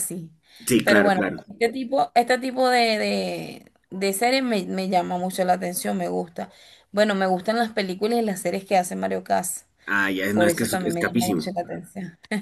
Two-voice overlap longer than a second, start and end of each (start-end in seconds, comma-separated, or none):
10.3-11.5